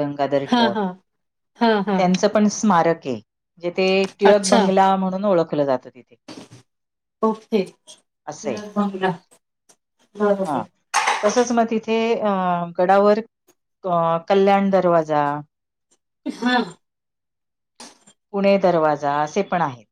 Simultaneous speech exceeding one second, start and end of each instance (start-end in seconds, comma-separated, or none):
none